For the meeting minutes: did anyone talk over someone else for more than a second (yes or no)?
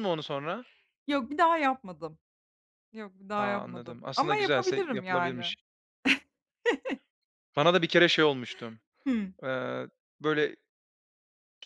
yes